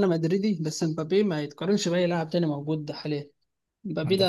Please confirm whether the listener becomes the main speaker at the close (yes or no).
no